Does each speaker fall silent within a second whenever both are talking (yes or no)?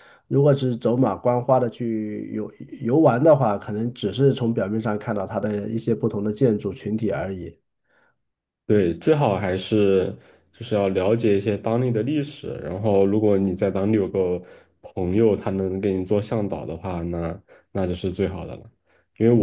yes